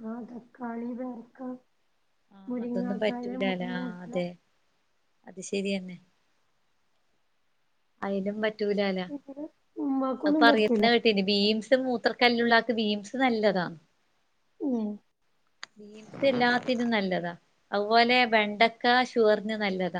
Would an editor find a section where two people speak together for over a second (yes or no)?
yes